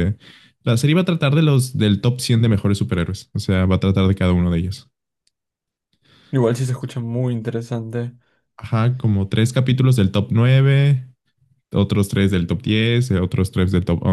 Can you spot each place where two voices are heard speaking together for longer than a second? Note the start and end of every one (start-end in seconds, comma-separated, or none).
none